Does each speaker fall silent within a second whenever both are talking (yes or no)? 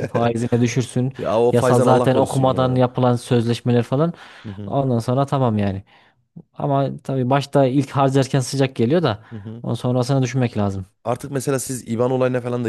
no